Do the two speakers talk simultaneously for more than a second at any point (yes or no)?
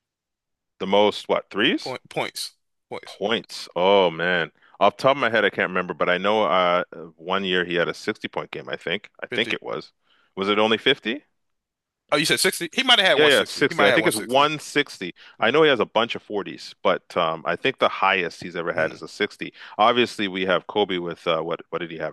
yes